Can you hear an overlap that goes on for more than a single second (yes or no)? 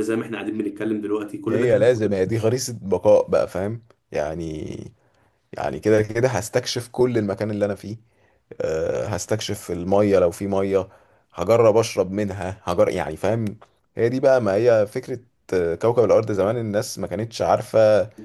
no